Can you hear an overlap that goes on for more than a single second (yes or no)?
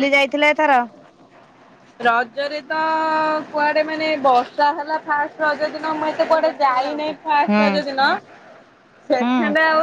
yes